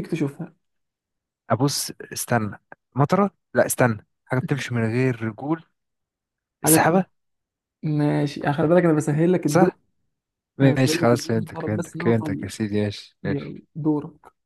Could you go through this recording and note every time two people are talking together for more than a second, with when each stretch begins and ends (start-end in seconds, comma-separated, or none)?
10.6-12.5